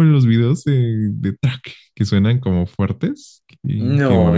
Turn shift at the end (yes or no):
yes